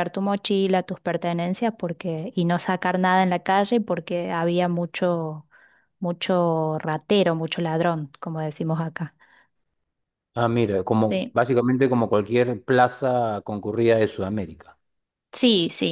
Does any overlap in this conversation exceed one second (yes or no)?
no